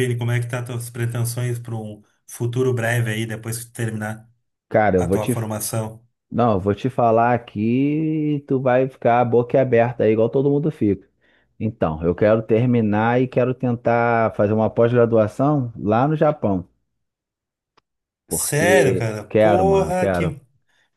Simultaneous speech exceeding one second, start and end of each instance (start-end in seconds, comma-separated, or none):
18.3-20.4